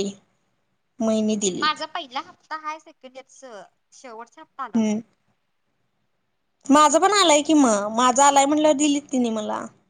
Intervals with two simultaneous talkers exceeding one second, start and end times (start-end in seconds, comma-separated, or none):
none